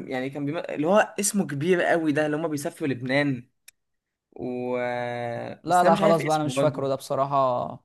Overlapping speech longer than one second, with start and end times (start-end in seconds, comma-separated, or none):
5.6-7.1